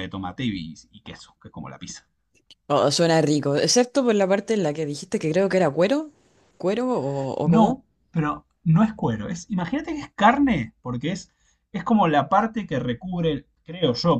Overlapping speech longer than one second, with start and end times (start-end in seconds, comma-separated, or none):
none